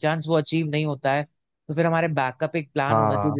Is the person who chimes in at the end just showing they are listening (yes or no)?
yes